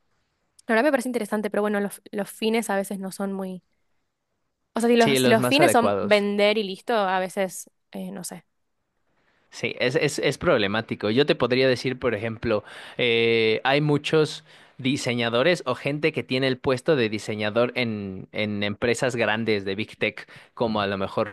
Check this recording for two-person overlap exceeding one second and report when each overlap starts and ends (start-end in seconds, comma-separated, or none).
5.0-6.2